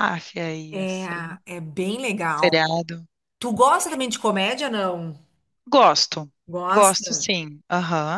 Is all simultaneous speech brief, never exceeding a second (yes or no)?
yes